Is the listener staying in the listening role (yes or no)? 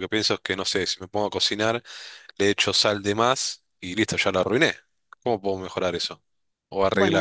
no